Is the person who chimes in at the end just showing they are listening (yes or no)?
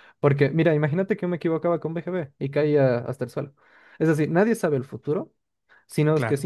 yes